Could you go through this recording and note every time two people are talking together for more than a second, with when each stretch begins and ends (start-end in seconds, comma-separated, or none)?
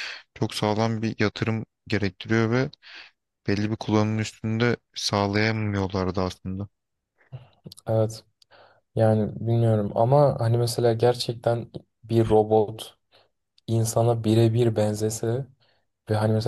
none